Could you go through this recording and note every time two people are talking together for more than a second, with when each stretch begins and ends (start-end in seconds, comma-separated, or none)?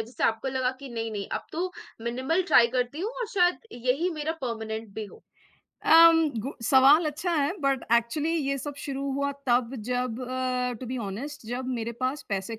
none